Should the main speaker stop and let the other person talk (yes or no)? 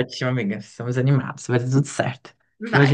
no